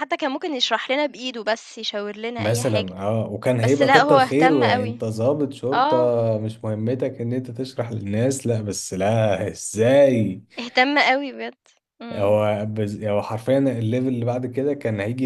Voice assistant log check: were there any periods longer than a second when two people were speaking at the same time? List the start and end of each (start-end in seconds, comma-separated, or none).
3.6-5.0